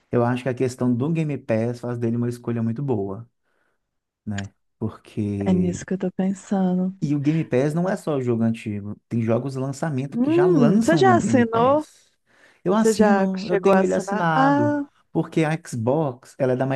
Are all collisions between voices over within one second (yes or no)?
no